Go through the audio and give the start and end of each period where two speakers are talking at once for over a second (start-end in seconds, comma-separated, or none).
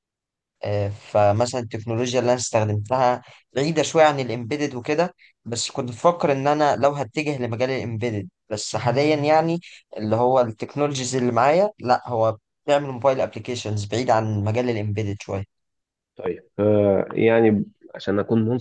none